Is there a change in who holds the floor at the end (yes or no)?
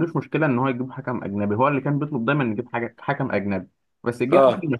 no